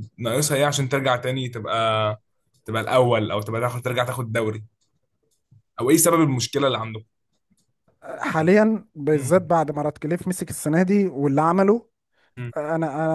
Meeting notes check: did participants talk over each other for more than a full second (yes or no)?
no